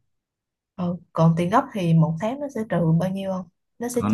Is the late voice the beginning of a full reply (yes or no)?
yes